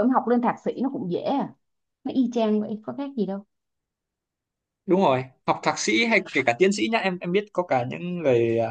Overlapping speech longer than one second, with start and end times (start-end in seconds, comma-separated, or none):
none